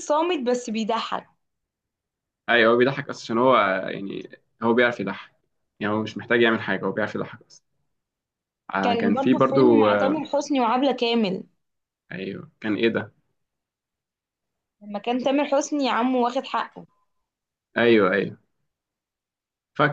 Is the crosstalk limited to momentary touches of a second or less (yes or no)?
no